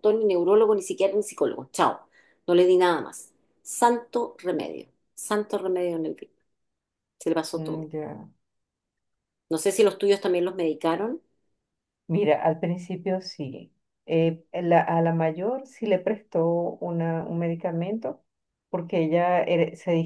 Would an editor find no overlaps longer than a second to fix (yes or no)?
yes